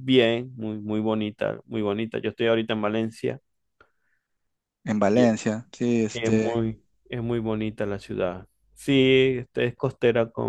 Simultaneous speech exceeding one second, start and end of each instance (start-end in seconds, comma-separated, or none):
none